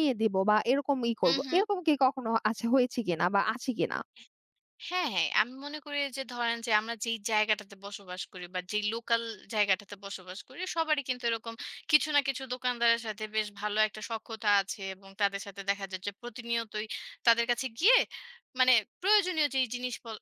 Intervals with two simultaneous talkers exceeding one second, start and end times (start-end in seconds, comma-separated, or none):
none